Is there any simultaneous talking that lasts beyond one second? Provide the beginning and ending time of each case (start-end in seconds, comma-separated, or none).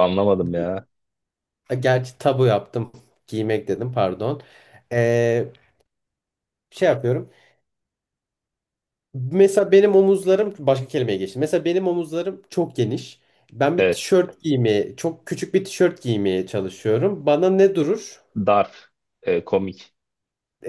none